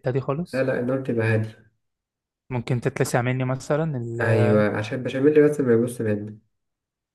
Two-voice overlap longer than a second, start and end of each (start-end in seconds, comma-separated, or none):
none